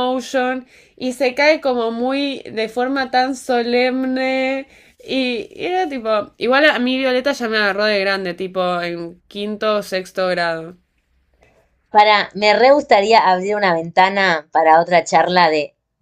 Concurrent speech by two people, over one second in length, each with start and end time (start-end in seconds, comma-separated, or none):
none